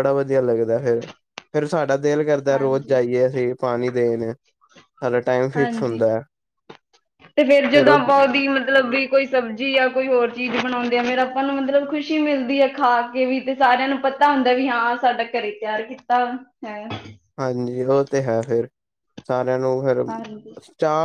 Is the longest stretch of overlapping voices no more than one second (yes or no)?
yes